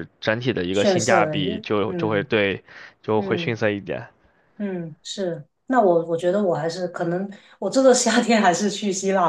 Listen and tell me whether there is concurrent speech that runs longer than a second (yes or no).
yes